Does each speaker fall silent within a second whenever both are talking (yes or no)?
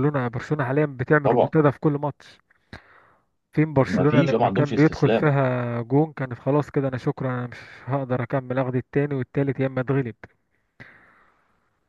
no